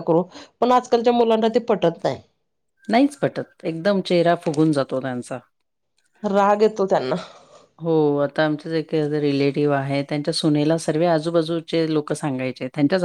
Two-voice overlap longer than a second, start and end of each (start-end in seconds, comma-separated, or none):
none